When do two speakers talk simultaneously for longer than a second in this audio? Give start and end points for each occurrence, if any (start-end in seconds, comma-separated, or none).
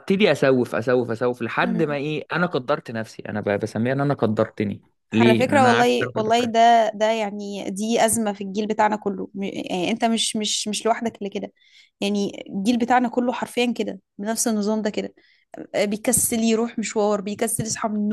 5.1-6.5